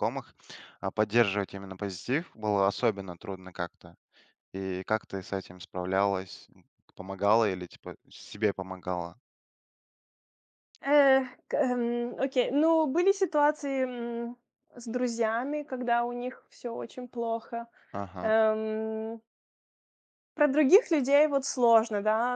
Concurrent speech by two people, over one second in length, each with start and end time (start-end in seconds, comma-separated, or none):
none